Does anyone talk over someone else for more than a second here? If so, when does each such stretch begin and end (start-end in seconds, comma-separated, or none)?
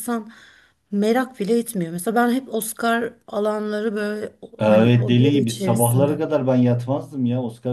4.6-6.2